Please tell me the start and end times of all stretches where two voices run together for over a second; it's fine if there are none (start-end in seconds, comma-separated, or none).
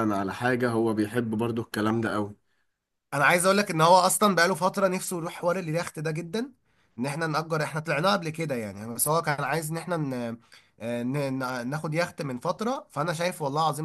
none